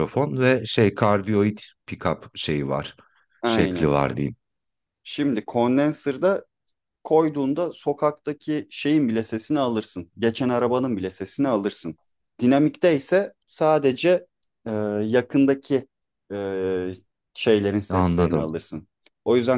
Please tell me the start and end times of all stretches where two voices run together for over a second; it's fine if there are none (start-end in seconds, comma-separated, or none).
none